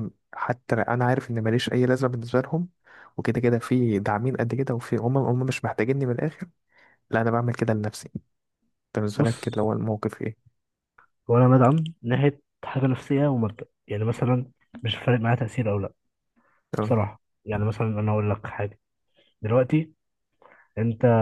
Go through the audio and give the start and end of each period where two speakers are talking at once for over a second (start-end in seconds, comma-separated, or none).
none